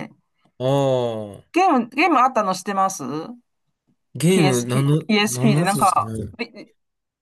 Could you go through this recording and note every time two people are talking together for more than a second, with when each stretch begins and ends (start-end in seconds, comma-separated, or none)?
4.3-6.3